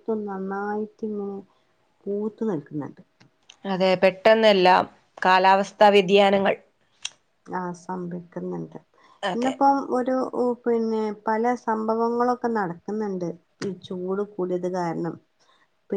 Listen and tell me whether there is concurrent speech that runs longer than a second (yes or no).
no